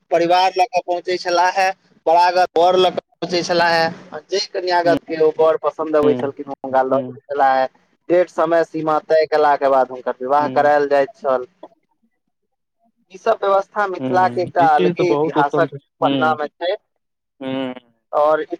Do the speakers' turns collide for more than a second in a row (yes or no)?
yes